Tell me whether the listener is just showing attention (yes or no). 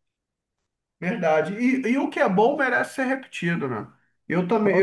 yes